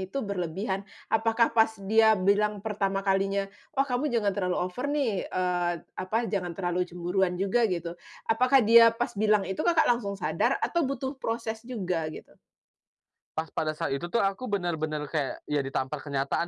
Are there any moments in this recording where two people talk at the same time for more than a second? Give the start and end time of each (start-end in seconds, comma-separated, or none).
none